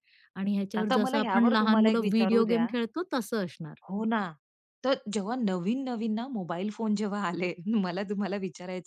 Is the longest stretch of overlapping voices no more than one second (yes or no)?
no